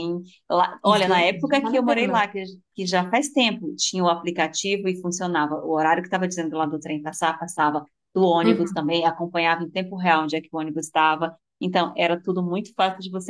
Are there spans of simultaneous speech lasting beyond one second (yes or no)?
yes